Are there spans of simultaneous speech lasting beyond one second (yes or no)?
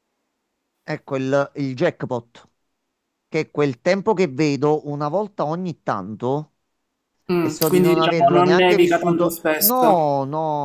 yes